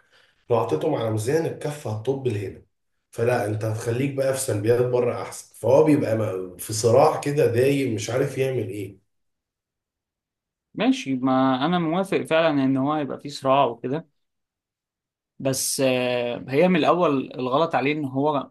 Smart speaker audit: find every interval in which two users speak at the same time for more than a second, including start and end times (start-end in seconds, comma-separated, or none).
none